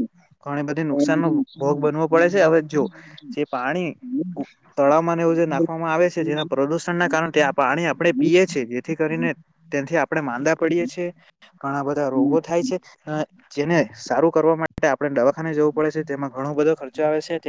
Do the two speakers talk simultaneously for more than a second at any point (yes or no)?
yes